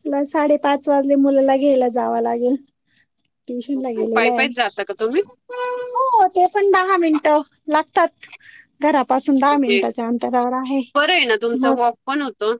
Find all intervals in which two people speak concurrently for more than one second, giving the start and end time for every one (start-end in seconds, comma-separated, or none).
none